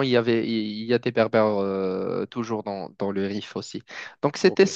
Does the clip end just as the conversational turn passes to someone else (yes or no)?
no